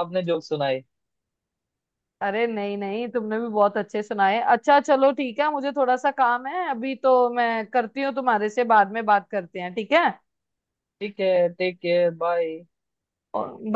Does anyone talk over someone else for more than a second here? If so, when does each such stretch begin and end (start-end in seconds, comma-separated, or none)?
none